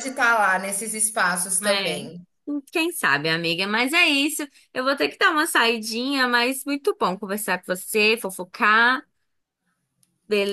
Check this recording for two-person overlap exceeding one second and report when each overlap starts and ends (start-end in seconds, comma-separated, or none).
none